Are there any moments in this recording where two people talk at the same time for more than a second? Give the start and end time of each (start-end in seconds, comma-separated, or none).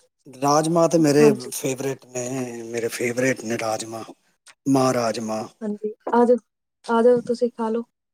none